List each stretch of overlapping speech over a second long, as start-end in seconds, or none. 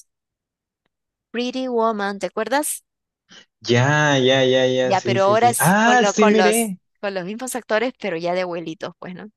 4.8-6.8